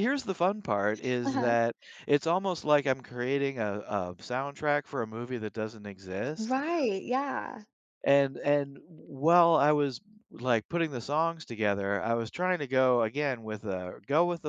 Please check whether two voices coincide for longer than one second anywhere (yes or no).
no